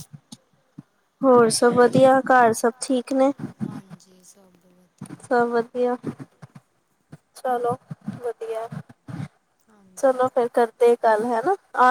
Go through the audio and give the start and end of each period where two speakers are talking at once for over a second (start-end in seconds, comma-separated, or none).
none